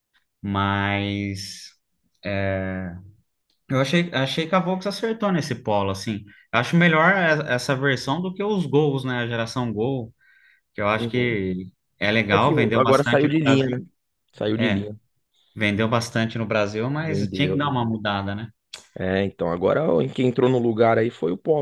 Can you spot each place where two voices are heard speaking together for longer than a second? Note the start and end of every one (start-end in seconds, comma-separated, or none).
12.3-13.8